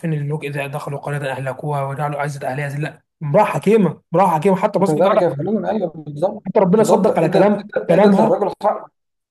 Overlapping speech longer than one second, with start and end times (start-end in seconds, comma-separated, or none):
6.5-8.3